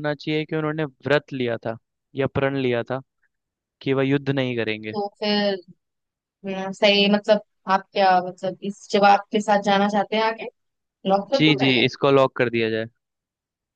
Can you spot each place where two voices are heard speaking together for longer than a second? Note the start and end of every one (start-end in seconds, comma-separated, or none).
none